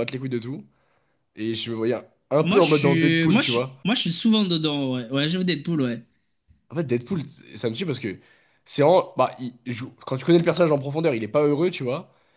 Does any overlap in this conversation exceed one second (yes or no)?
yes